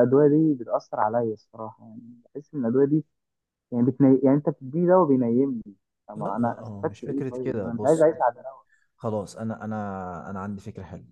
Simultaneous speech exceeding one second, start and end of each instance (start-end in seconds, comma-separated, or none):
6.2-8.2